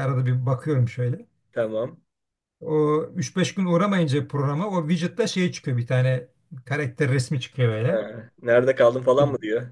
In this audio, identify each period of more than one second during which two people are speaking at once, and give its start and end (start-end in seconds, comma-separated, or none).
none